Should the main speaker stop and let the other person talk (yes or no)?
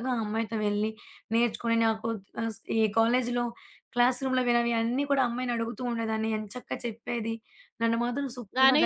yes